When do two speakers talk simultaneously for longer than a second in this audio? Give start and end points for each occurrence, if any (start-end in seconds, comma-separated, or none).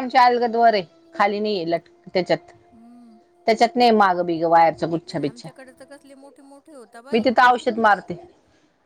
none